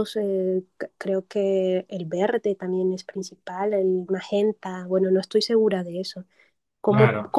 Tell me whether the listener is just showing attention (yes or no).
yes